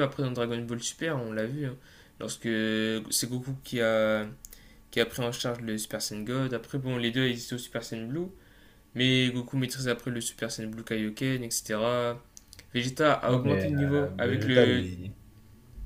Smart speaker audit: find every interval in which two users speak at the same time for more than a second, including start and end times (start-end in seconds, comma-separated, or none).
13.3-14.8